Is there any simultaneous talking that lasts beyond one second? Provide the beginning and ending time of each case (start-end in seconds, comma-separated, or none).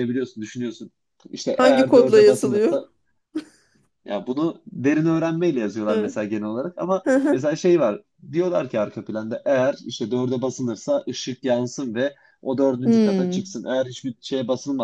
1.5-2.8